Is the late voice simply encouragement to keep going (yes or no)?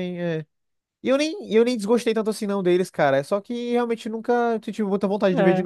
no